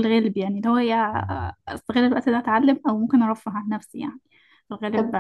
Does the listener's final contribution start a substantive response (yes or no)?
no